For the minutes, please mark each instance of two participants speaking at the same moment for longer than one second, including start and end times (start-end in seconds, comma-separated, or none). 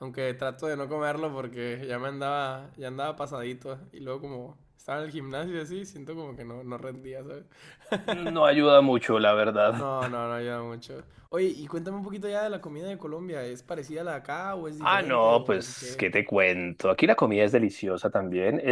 14.9-16.1